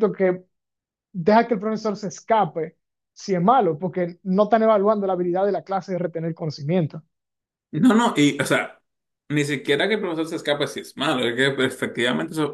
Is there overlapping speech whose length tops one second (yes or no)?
no